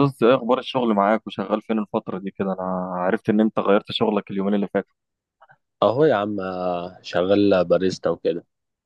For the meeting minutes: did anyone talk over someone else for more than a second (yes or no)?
no